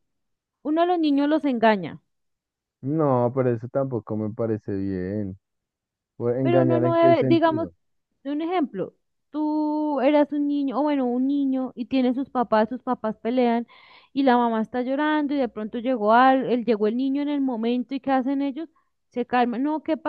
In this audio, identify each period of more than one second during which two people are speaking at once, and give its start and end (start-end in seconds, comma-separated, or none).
6.4-7.7